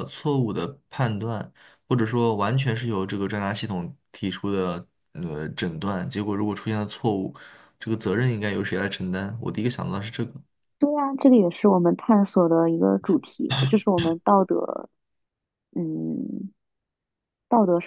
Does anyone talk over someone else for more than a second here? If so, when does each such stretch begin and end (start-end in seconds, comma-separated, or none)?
none